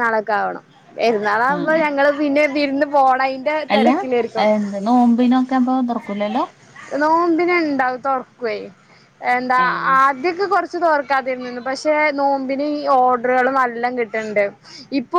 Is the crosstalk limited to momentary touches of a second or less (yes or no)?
yes